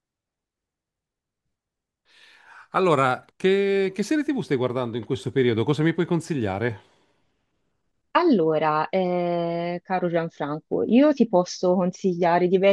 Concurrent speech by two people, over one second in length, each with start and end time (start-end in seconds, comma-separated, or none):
none